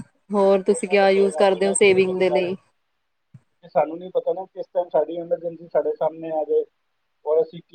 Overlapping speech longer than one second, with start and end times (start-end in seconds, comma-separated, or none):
0.7-2.5